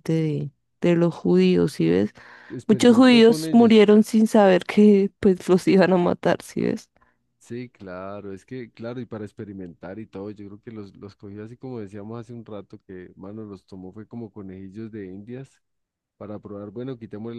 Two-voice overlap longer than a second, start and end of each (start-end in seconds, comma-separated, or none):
2.7-3.9